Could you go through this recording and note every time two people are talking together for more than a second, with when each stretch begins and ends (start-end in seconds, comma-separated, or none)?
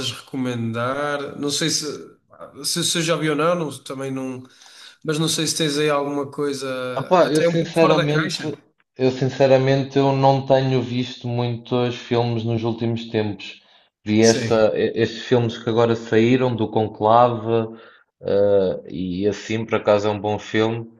7.2-8.4